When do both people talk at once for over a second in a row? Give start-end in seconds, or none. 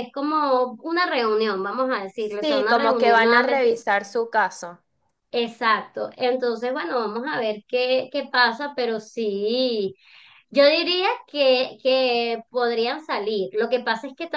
2.2-3.7